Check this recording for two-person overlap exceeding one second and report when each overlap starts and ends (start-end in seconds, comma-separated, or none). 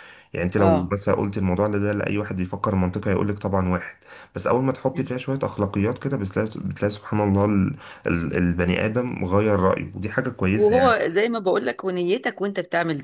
none